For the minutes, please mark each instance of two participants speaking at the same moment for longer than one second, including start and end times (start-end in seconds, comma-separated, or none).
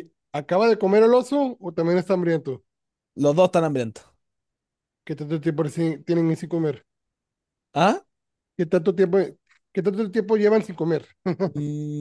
none